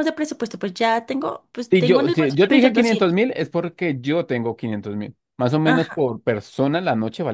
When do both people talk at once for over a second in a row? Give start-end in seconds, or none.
1.7-3.2